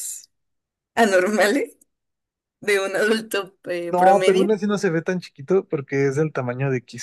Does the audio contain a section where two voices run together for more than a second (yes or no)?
no